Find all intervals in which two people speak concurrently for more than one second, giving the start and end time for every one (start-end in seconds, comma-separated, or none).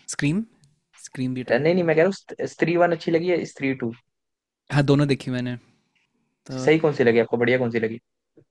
none